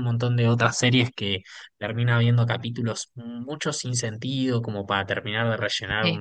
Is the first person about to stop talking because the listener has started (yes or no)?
no